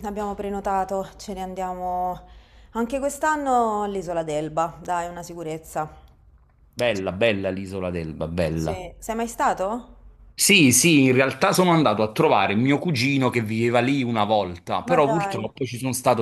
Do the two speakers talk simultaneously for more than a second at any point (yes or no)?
no